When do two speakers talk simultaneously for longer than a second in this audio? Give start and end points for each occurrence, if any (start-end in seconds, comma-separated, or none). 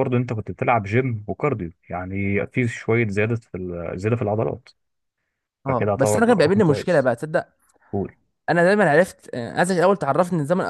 5.7-7.1